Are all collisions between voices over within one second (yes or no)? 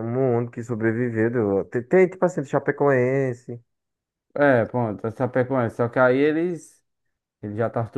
yes